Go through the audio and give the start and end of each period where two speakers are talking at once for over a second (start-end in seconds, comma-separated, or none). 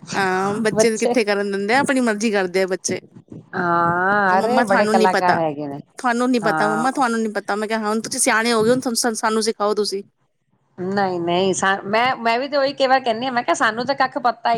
none